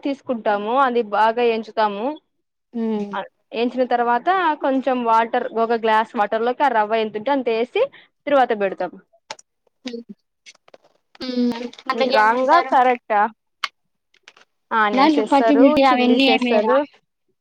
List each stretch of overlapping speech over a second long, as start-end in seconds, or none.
15.0-16.8